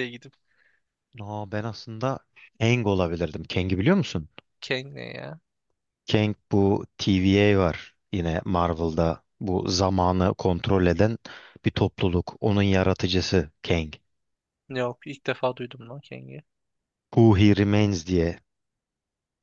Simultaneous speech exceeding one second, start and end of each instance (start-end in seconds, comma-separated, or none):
none